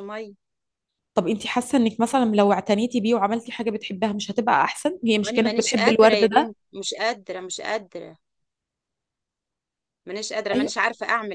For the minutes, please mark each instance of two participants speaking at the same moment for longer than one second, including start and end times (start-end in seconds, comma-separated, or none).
5.2-6.5